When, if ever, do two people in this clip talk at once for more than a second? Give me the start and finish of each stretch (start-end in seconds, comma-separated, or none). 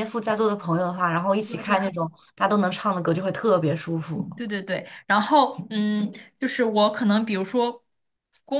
none